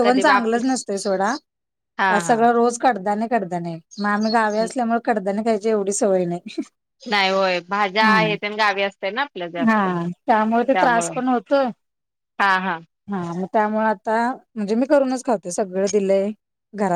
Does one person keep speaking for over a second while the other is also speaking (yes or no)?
yes